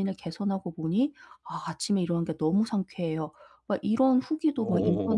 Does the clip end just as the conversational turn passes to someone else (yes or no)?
no